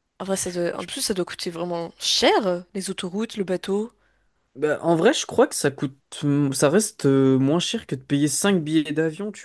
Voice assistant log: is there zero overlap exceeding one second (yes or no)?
yes